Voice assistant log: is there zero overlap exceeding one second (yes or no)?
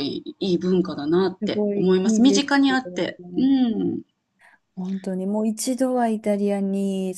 no